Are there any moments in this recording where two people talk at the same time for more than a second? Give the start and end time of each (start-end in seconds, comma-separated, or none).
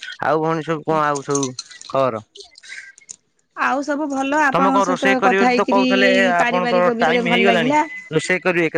4.5-7.7